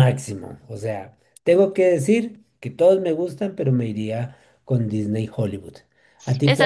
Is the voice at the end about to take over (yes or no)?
yes